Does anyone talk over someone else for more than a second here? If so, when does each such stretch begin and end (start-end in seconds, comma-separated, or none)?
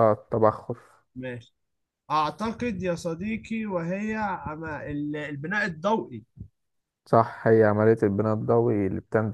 none